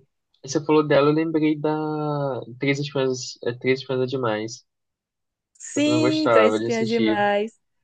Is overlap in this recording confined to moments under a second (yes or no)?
no